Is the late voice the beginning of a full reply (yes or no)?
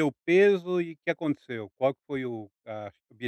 yes